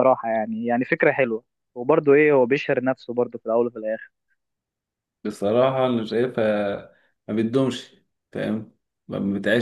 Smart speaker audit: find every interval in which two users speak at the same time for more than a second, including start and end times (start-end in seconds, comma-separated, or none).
none